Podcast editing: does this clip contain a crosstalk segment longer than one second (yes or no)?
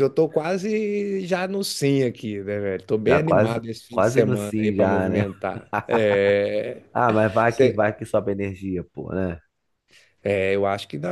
yes